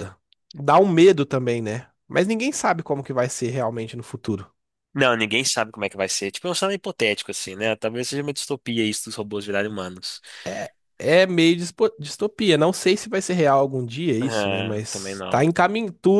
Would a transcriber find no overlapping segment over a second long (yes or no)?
no